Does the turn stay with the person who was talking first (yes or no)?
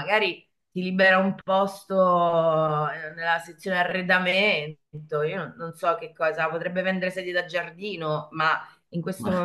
yes